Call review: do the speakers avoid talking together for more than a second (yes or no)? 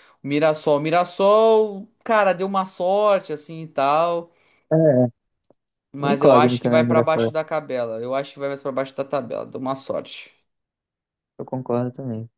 no